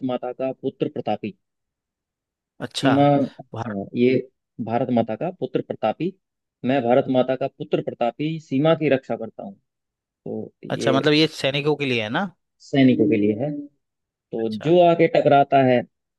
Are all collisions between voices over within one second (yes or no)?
yes